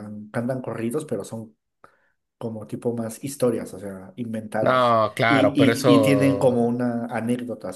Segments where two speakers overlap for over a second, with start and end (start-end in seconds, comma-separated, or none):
4.6-6.7